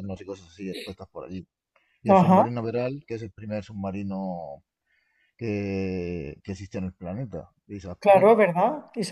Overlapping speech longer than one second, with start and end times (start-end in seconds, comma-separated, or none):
none